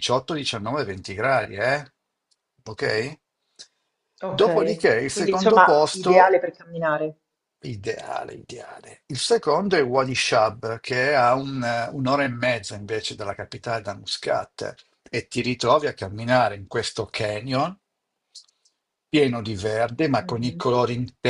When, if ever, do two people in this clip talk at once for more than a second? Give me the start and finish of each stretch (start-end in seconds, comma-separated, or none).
4.3-6.4